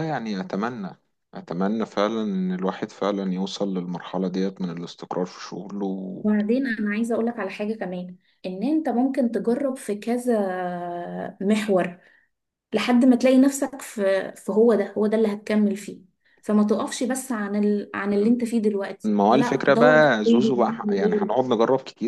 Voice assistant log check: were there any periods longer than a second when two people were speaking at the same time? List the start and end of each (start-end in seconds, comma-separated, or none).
19.1-21.3